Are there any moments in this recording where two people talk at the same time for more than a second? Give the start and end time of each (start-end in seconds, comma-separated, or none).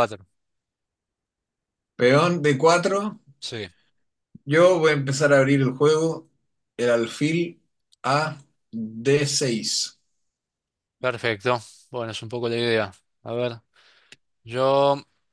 none